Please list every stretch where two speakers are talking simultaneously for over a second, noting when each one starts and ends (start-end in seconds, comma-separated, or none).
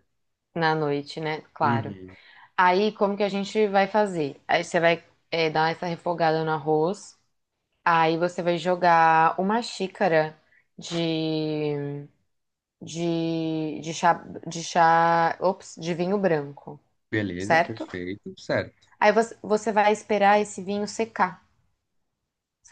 none